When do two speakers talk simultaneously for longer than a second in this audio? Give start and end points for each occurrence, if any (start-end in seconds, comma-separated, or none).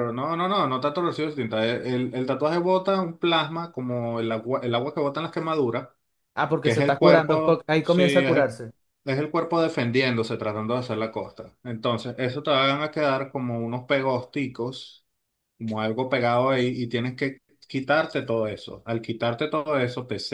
6.6-8.6